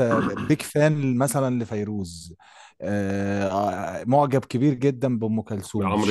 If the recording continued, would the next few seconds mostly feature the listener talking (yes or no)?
yes